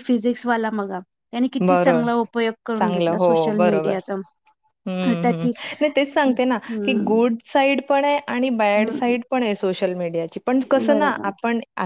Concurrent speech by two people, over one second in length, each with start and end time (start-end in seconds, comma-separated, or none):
none